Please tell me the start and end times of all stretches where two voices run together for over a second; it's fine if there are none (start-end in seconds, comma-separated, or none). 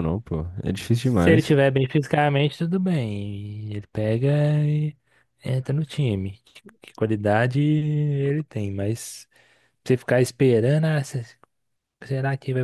none